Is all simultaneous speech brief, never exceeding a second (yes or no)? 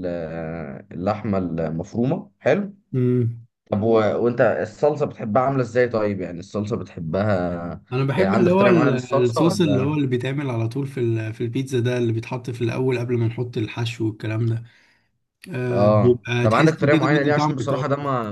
no